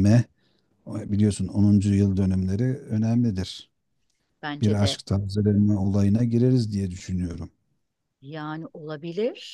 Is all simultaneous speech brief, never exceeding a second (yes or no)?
yes